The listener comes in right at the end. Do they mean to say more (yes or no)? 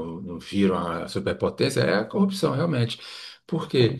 no